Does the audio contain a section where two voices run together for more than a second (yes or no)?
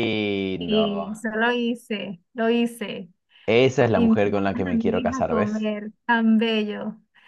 yes